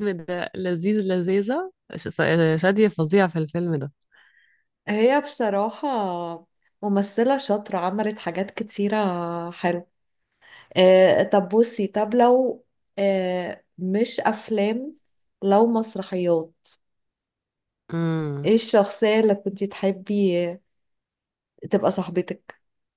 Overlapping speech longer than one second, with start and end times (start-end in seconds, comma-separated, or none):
none